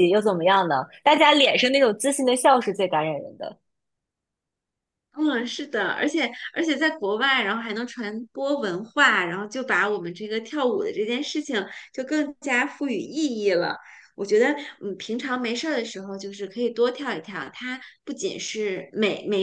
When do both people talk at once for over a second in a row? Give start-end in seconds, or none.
none